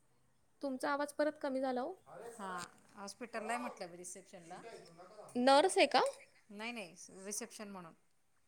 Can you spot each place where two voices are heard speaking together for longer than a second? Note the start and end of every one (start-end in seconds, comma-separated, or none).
none